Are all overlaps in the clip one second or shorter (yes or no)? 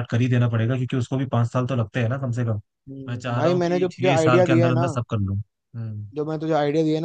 no